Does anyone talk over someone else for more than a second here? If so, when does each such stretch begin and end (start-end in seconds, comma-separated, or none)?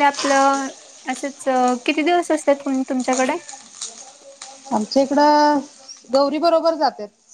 none